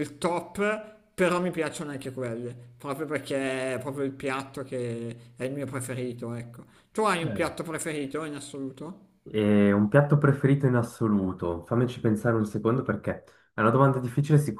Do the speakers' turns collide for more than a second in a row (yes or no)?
no